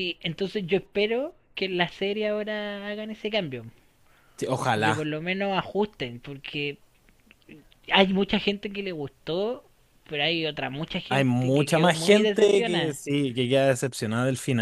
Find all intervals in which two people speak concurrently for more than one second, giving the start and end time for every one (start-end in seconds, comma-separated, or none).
11.1-13.0